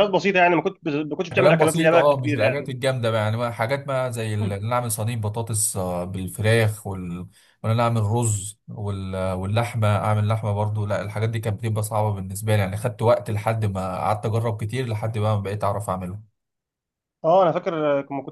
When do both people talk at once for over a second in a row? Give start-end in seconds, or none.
1.3-2.7